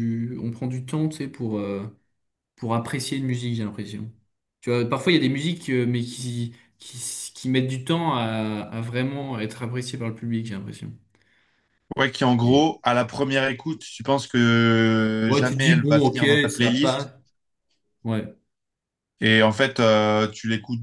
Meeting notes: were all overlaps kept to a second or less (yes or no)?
no